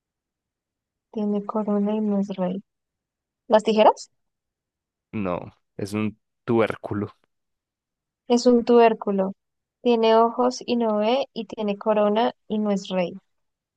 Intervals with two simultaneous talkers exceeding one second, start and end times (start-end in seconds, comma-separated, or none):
none